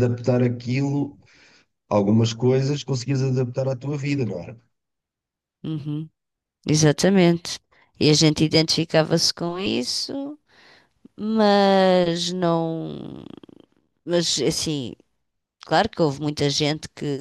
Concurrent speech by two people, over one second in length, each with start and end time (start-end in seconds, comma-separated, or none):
none